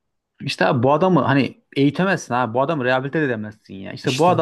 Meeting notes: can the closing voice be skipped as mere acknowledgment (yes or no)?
no